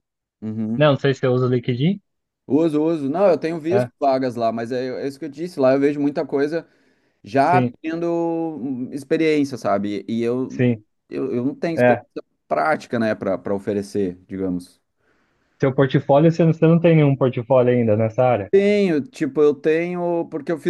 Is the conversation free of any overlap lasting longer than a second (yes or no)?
yes